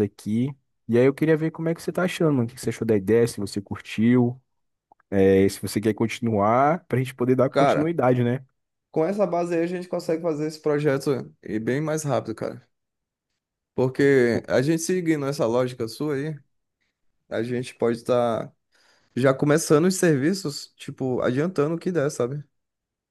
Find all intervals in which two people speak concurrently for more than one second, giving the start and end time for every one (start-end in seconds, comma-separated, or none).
none